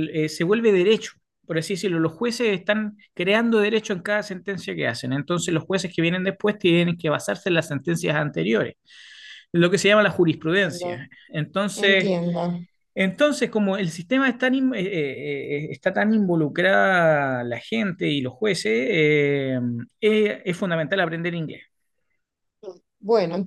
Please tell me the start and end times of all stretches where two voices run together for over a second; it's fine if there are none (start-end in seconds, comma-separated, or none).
none